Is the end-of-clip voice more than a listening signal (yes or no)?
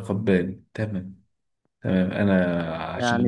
yes